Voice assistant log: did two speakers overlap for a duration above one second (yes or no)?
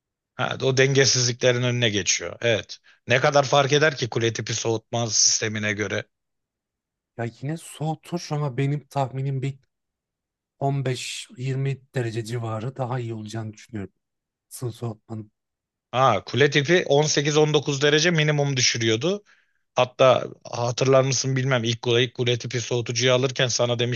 no